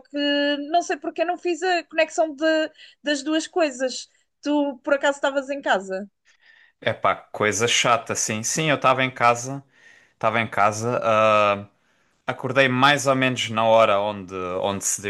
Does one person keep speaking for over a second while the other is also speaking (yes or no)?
no